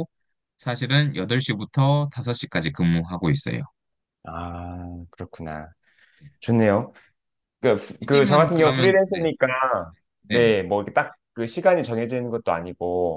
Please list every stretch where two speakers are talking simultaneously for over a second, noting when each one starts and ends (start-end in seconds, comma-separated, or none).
8.0-9.3